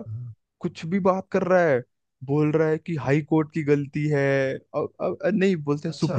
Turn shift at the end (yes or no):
no